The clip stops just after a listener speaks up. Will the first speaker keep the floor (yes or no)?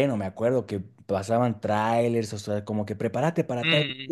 yes